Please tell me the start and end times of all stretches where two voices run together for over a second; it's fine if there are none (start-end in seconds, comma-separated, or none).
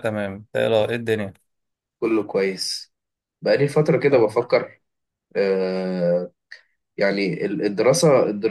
none